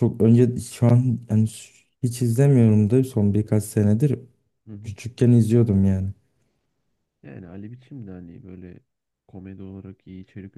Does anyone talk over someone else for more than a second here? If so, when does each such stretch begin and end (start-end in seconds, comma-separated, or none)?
none